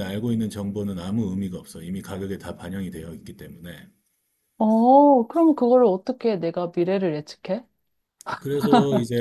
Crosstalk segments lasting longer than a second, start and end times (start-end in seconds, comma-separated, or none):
none